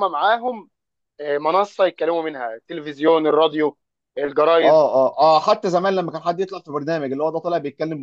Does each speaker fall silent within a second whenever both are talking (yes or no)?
yes